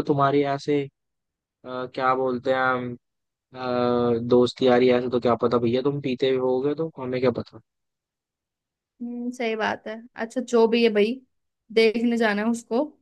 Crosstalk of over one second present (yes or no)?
no